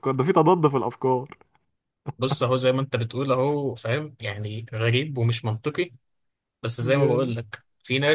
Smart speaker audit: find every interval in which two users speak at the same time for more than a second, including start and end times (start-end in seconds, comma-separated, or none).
none